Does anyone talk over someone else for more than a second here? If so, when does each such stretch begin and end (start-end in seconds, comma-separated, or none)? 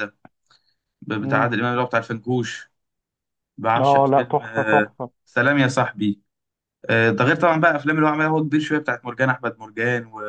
3.8-5.1